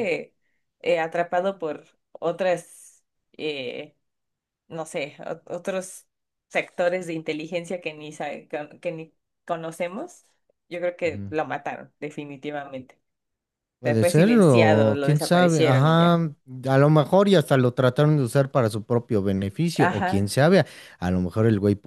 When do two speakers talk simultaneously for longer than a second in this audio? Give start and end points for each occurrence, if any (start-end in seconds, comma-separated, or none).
13.8-16.1